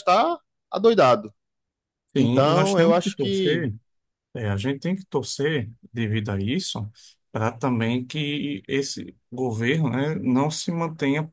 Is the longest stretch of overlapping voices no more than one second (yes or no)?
no